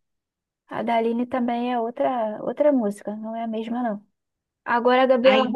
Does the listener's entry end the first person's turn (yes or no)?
no